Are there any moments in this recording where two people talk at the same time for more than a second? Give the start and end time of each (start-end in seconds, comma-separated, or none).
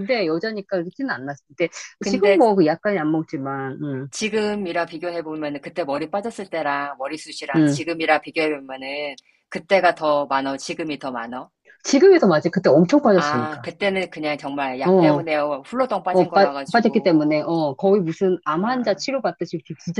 16.1-17.5